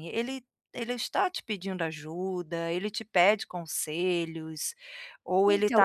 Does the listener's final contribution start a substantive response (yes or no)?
yes